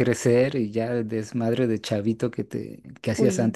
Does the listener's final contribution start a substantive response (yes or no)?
no